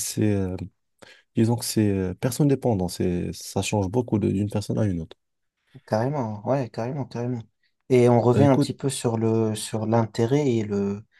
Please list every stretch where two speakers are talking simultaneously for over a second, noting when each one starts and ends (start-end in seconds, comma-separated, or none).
none